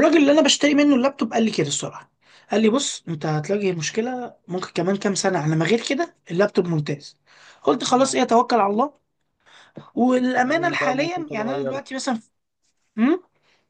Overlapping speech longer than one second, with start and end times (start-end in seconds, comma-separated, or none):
10.4-11.8